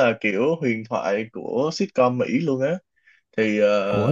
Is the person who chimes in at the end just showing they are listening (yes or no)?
no